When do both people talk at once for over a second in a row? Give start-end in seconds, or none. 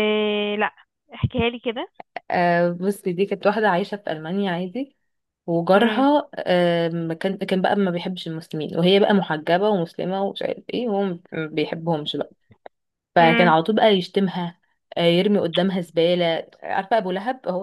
none